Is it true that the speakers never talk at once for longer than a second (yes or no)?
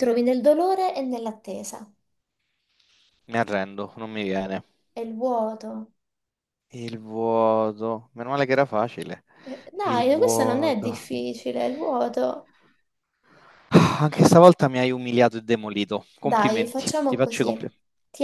no